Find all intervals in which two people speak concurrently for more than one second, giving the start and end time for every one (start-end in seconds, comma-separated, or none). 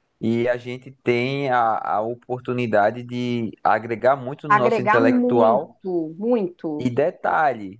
4.5-5.7